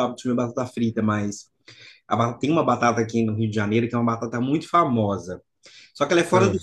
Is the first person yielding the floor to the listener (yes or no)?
no